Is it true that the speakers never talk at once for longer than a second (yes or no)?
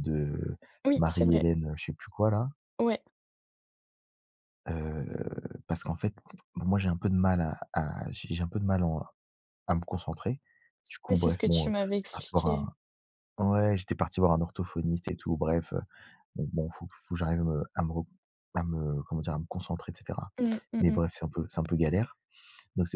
no